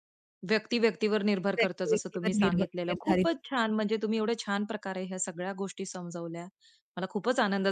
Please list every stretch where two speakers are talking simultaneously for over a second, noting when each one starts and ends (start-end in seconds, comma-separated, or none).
1.6-3.6